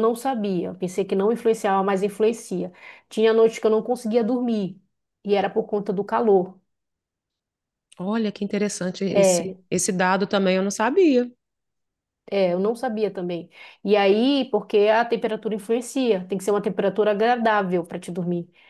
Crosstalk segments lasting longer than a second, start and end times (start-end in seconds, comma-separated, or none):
none